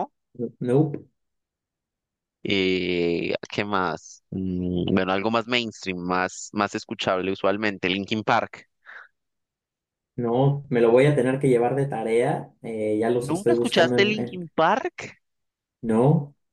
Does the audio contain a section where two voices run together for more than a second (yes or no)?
yes